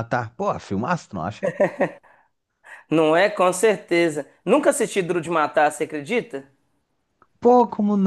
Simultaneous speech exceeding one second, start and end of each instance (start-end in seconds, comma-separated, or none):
none